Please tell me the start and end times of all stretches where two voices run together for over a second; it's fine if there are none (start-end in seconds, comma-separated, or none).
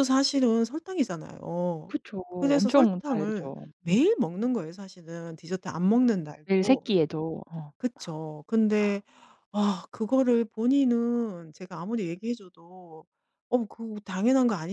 1.9-4.0